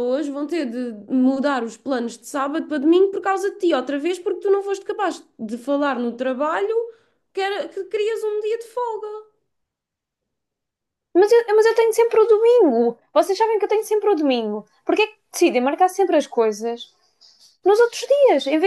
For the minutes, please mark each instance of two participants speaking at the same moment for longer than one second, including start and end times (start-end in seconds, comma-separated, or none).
none